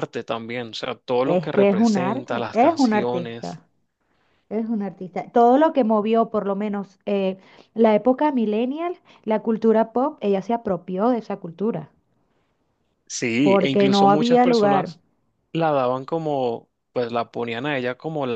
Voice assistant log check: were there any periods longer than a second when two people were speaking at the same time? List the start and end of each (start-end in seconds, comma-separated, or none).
1.2-3.6, 13.4-14.9